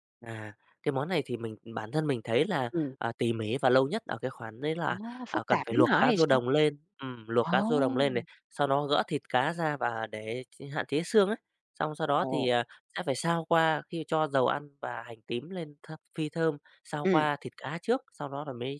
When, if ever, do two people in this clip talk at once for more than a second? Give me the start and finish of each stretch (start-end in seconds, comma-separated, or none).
4.8-6.4